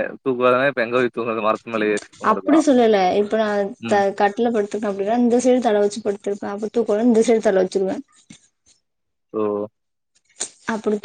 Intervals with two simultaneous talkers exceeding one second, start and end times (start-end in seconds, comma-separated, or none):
none